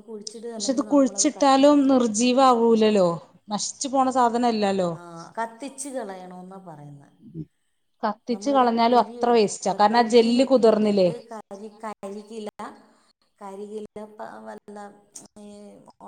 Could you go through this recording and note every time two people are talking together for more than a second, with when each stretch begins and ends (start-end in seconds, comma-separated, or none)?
9.8-11.1